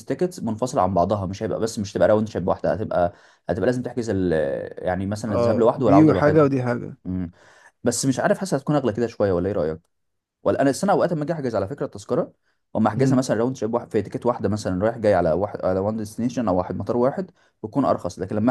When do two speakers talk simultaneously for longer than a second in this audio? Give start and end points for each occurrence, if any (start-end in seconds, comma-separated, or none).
5.3-6.5